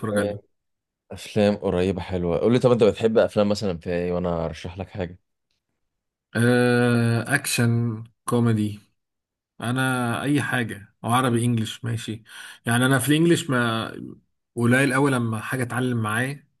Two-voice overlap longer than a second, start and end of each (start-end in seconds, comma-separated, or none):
none